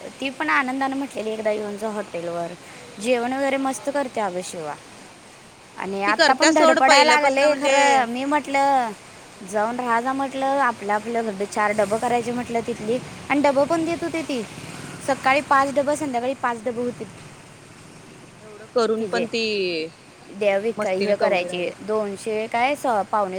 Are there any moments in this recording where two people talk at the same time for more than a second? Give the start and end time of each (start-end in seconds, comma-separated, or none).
6.1-7.7, 20.4-21.7